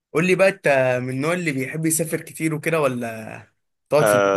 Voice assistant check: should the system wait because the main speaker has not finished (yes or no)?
no